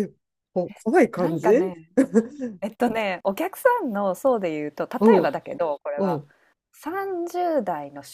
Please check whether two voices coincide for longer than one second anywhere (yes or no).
no